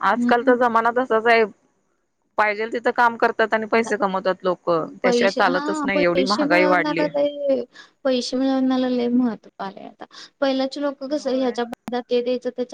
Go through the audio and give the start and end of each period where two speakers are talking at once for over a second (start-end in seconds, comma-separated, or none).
5.0-7.0